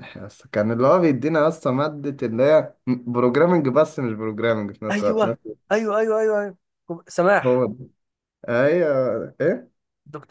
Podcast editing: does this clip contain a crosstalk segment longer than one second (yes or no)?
no